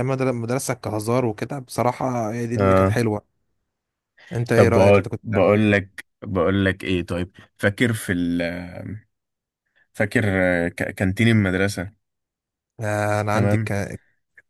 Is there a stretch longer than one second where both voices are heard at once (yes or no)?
yes